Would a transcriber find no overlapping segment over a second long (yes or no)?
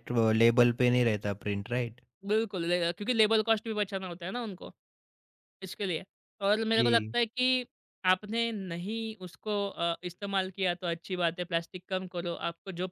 yes